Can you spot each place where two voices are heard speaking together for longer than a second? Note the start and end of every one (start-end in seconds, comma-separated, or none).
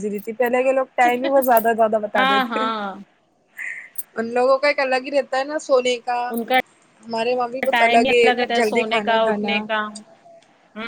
7.7-9.6